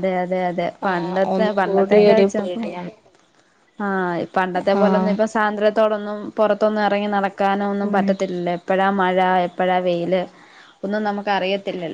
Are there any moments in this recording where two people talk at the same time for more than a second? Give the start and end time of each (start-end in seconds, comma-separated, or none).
0.9-2.7